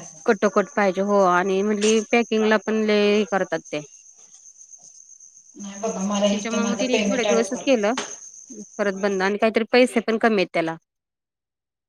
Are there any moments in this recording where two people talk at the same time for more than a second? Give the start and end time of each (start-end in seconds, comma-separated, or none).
5.6-7.7